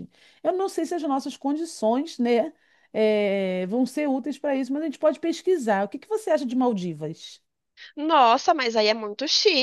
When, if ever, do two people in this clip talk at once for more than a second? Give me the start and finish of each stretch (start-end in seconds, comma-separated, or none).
none